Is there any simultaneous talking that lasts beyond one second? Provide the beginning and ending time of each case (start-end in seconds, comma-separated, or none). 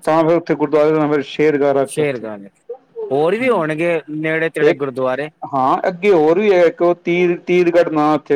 none